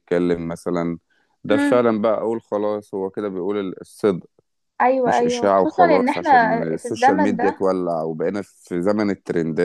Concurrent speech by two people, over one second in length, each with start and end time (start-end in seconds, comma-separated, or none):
5.1-7.6